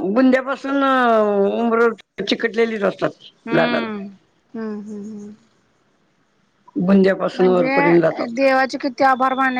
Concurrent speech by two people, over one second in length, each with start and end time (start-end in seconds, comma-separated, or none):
none